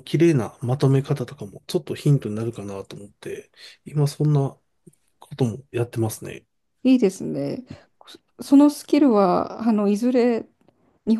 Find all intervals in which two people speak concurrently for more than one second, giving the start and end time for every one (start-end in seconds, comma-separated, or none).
none